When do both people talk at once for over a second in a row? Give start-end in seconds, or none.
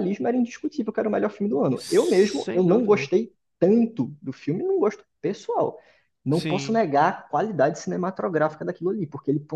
1.8-3.1